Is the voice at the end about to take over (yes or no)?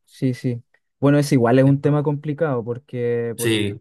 no